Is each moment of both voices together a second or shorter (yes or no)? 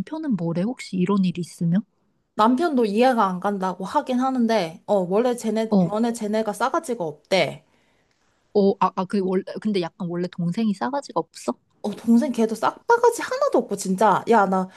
yes